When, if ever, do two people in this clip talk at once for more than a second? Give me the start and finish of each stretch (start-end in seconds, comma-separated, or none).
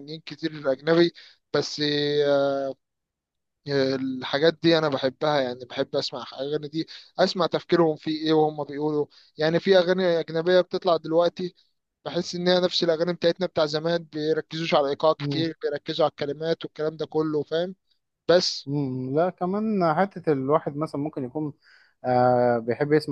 none